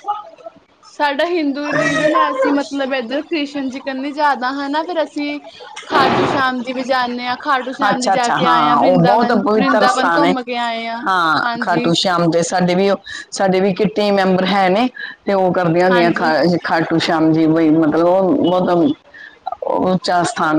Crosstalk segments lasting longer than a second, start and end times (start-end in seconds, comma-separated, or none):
7.9-10.3